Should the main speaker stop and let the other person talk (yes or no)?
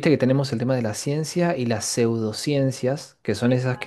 no